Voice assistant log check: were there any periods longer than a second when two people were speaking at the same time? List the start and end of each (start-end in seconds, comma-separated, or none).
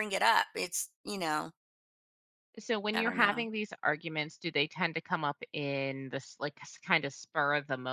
none